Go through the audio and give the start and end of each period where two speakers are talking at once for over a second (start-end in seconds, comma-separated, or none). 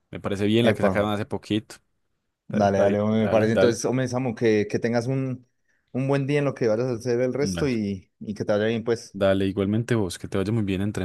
2.5-3.8